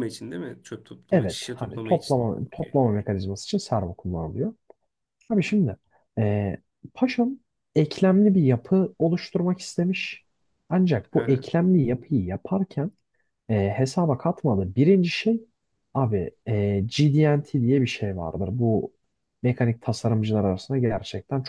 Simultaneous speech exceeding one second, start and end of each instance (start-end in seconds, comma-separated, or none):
1.1-2.8